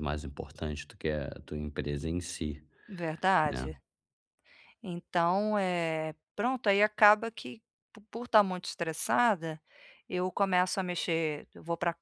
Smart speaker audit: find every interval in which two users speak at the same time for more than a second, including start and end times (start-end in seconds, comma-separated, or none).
none